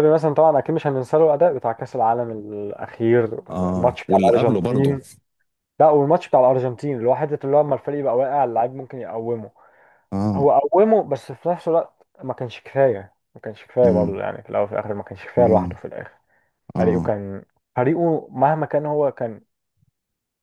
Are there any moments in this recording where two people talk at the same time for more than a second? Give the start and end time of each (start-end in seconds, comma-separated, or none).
3.8-5.0